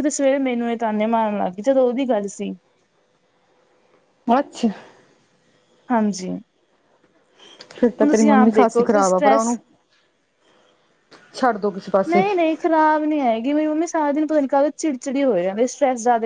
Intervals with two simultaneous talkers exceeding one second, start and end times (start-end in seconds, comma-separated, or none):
8.1-9.5